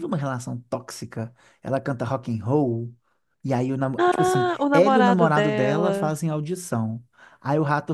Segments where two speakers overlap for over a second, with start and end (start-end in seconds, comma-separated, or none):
4.0-6.2